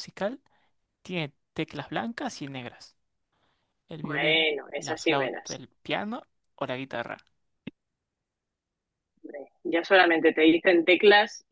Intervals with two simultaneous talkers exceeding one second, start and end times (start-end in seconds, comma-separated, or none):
4.0-5.6